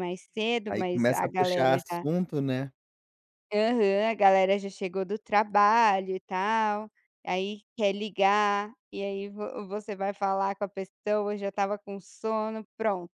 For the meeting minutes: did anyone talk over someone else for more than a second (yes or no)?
yes